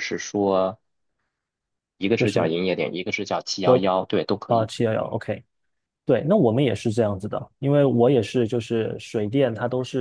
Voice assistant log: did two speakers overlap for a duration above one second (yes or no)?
no